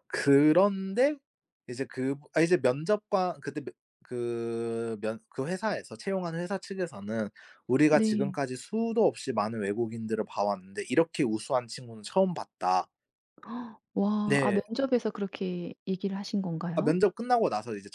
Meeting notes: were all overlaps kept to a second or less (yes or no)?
yes